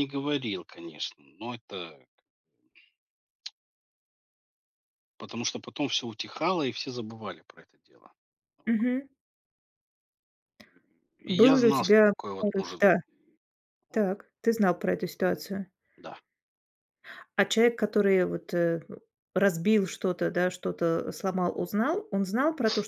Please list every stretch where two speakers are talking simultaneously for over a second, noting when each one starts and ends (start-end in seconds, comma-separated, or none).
11.3-12.9